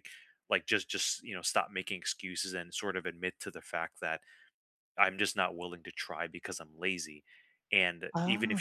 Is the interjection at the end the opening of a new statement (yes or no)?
no